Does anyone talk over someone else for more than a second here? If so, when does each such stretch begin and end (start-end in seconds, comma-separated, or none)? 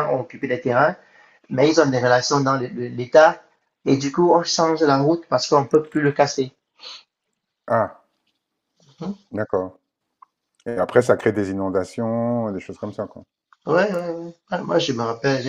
none